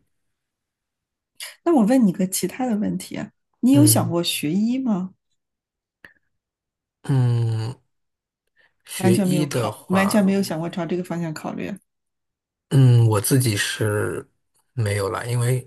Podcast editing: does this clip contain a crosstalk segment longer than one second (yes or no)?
yes